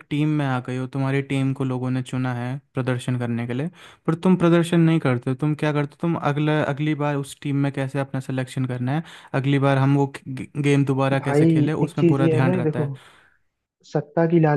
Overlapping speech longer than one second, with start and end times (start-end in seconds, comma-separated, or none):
11.1-12.9